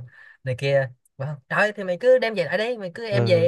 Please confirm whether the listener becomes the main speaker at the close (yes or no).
no